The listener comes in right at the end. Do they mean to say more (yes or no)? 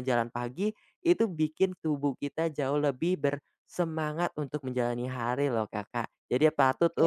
no